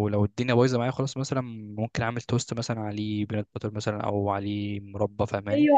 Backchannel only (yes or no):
no